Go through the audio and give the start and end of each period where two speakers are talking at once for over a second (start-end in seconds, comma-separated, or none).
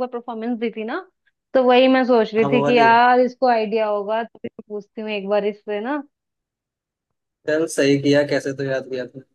none